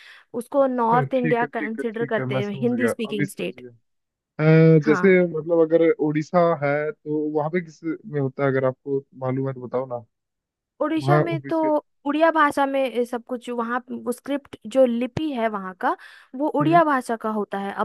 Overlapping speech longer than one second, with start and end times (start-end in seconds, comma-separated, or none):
0.6-3.6